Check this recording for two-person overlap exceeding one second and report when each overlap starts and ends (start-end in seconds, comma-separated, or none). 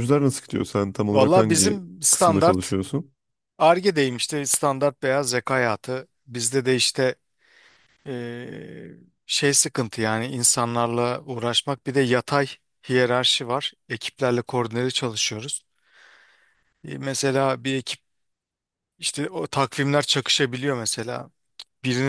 1.1-2.8